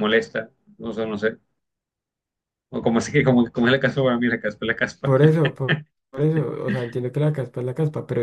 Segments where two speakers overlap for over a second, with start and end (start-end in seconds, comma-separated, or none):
none